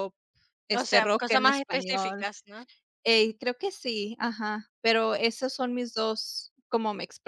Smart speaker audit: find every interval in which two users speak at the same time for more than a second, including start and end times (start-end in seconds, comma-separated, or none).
0.7-2.3